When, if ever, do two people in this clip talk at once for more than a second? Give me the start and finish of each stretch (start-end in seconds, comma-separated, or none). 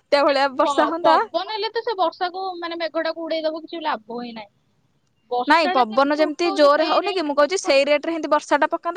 5.5-7.9